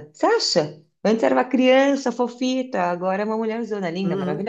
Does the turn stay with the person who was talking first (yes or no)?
no